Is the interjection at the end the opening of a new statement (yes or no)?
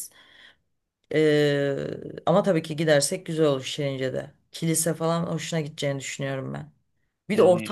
no